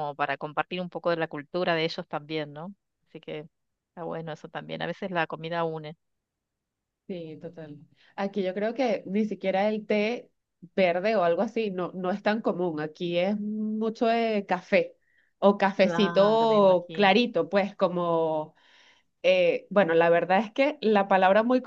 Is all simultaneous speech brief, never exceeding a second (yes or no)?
no